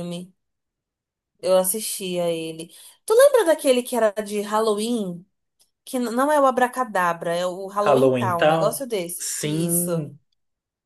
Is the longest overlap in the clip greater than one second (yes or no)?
yes